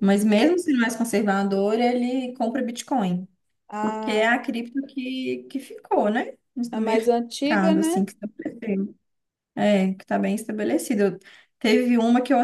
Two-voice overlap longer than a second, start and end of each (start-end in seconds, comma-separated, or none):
6.7-8.1